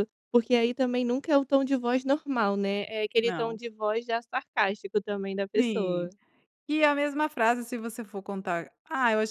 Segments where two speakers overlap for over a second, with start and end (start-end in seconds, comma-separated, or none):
none